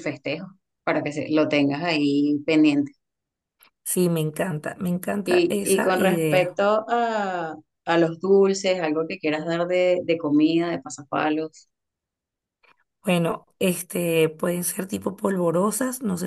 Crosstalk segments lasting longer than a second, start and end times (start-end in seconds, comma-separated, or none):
5.2-6.6